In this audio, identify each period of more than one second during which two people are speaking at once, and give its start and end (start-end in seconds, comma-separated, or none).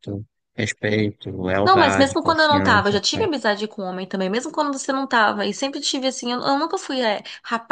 1.6-3.3